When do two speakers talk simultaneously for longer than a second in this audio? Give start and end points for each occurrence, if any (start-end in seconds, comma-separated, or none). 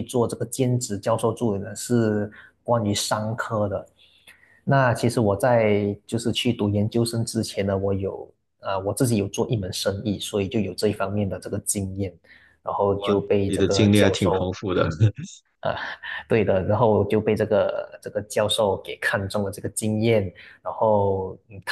12.9-14.5